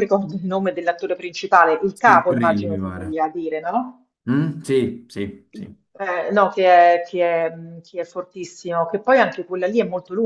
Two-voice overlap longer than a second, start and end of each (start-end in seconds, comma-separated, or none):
1.9-3.2